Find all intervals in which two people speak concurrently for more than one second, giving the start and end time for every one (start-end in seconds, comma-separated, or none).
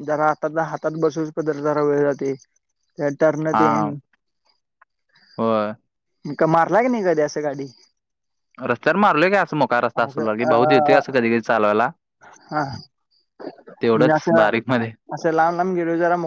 none